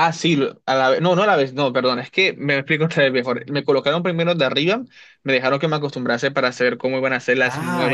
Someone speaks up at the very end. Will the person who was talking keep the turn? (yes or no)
no